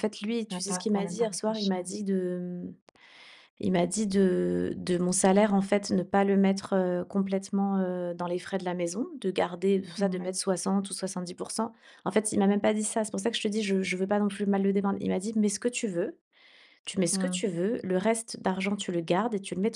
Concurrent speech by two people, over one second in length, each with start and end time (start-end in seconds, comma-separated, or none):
0.5-1.9